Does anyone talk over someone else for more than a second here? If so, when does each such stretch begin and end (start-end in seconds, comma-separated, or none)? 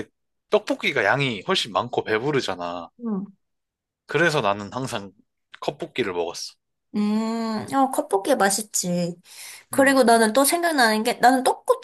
none